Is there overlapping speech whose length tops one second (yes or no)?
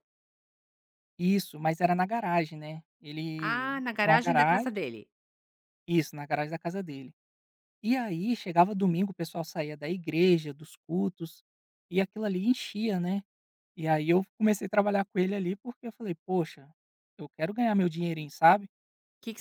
yes